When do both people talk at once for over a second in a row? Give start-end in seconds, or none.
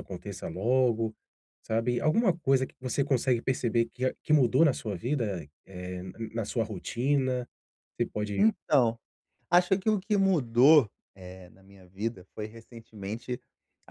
none